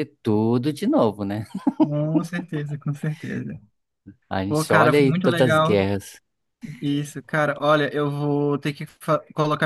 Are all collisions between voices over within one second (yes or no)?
no